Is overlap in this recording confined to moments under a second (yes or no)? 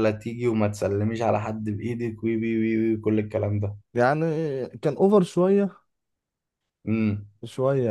yes